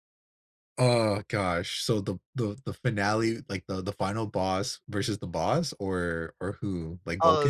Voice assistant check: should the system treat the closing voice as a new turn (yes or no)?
yes